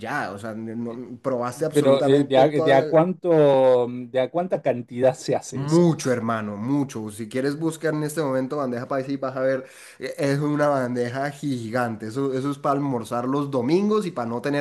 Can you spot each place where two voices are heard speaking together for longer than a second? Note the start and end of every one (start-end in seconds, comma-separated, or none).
1.7-3.0